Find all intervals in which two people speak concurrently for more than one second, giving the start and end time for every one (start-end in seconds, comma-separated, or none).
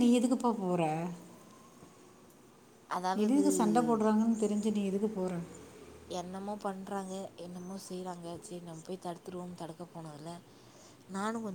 none